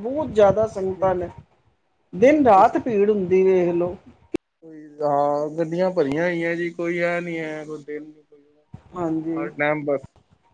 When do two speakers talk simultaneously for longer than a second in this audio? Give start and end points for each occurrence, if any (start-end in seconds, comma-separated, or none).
none